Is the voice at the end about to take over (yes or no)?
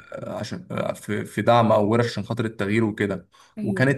no